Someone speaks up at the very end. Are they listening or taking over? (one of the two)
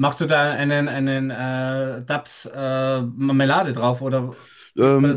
taking over